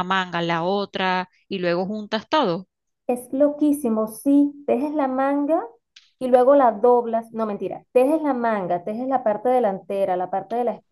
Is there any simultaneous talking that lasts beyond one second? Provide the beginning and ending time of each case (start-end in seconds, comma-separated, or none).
none